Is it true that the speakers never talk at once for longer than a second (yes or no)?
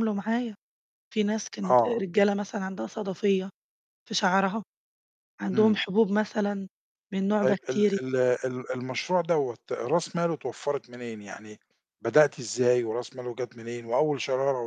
yes